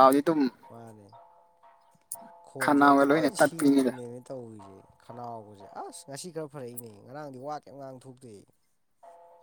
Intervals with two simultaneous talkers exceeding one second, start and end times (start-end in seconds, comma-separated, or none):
2.6-3.9